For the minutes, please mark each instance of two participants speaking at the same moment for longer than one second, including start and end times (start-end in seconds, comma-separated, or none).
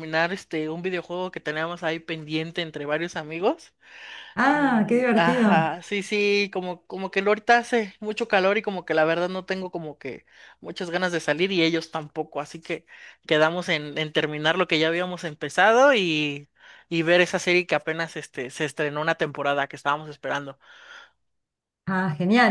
4.4-5.7